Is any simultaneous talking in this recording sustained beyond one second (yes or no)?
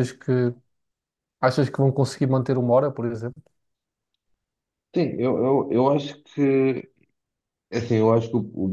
no